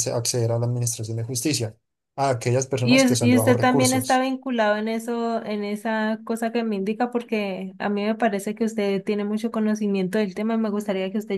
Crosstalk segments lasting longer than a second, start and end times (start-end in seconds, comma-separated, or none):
2.8-4.2